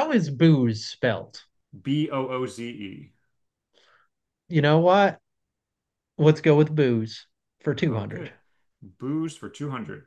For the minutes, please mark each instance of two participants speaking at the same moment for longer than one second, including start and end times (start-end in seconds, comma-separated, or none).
none